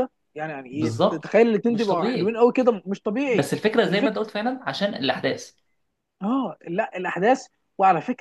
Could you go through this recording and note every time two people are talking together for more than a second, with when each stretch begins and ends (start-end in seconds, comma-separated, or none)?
0.7-2.4